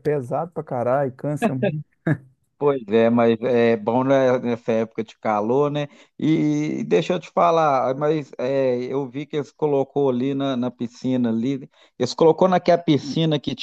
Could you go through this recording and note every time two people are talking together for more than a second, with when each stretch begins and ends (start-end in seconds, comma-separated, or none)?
none